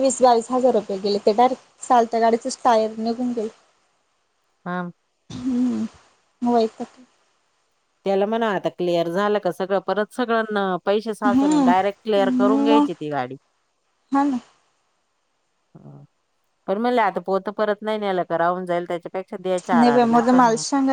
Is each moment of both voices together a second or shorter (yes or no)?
yes